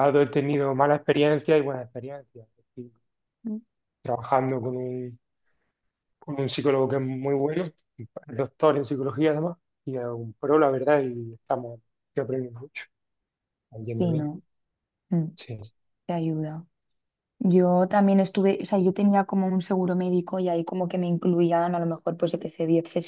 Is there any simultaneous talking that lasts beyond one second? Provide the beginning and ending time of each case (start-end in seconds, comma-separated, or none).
none